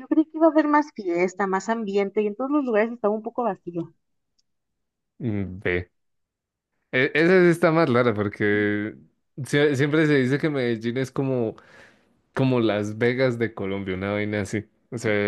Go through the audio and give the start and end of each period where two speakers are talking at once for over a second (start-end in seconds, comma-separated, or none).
none